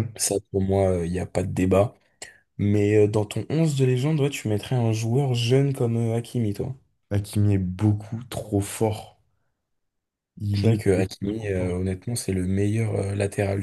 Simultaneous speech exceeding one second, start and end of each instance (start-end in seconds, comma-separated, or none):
10.5-11.8